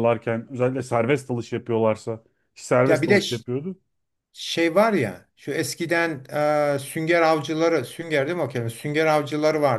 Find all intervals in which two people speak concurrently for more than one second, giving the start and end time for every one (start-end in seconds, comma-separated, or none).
none